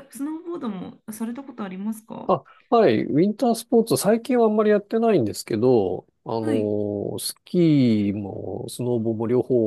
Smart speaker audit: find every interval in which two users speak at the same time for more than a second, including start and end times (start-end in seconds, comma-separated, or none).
none